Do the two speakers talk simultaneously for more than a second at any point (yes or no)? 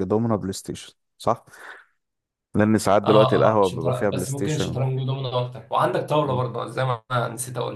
yes